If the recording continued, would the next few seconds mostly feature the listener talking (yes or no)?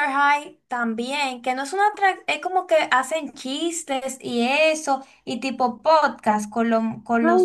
yes